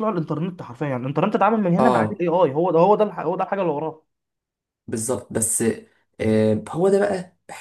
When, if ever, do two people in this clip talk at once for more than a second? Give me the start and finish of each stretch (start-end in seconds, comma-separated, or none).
none